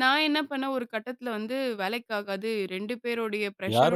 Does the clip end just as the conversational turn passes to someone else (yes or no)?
yes